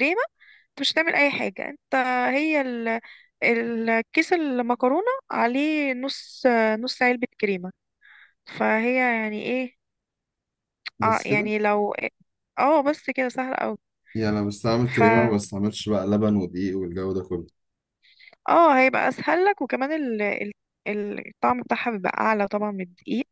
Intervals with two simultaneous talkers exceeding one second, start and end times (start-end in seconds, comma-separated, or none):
none